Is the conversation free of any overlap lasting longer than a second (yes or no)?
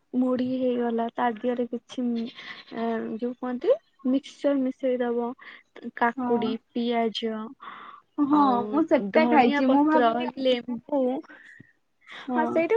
no